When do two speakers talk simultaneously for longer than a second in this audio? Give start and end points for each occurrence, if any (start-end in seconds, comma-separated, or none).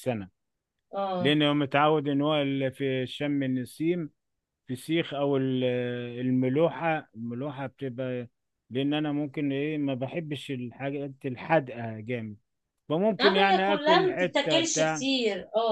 13.2-15.1